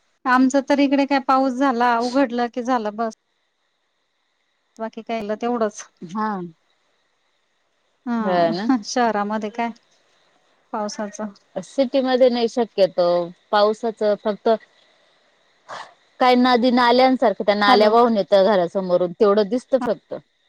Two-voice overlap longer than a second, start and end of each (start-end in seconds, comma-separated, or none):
none